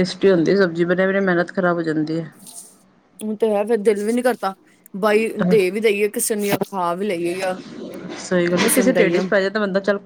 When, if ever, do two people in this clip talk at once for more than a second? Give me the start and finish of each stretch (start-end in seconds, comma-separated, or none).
none